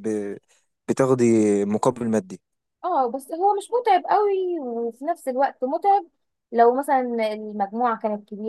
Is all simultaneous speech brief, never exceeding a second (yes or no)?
yes